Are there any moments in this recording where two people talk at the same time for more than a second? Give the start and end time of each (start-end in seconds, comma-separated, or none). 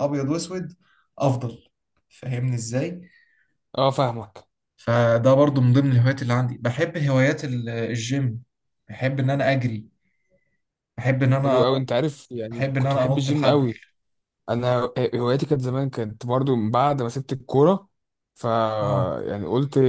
12.5-13.7